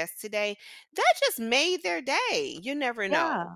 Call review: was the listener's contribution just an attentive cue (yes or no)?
no